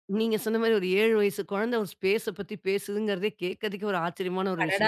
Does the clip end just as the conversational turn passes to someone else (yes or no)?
yes